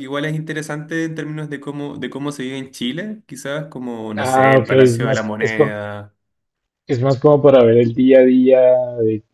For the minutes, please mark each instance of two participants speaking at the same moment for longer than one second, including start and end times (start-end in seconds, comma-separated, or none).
4.2-5.8